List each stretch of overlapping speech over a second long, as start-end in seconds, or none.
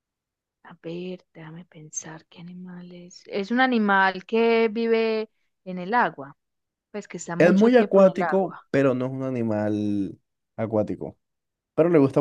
7.4-8.6